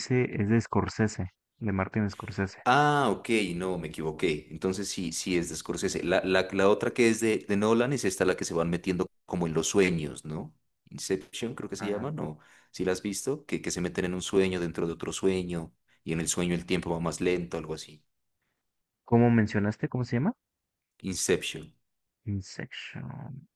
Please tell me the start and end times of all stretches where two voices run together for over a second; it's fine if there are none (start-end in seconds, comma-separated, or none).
none